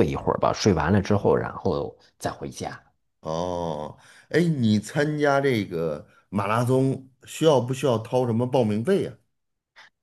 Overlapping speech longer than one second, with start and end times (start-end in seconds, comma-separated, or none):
none